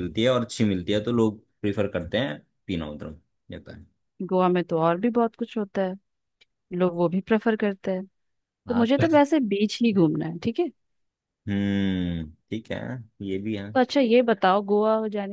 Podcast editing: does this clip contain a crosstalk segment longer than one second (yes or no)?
no